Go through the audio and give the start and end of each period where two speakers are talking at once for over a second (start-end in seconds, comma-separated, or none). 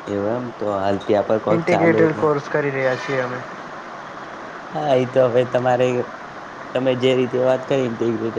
none